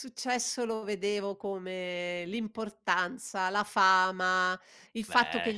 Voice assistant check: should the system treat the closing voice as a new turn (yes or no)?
no